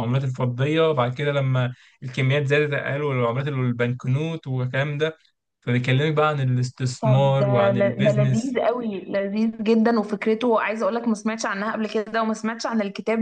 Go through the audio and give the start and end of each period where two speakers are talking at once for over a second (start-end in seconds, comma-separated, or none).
7.0-8.6